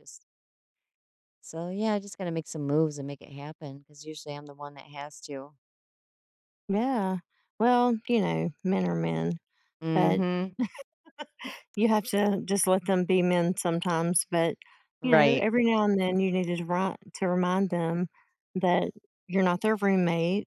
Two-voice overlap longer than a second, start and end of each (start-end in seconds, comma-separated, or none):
none